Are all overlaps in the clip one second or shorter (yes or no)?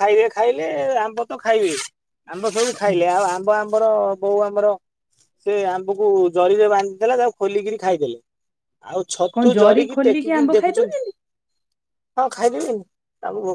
no